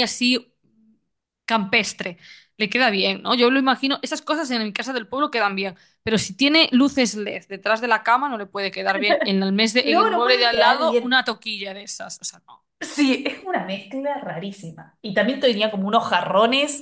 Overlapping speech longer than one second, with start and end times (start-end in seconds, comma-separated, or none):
9.8-11.2